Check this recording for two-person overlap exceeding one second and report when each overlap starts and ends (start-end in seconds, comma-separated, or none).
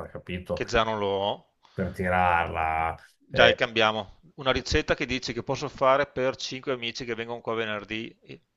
none